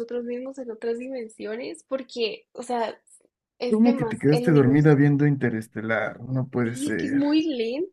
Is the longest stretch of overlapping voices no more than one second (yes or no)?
no